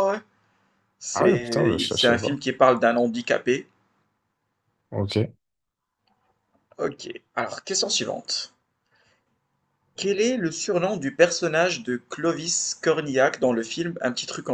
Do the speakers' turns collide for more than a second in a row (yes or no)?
yes